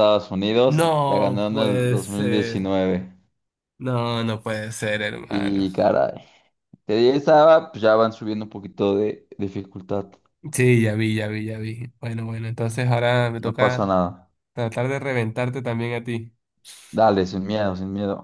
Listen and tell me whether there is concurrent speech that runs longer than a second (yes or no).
yes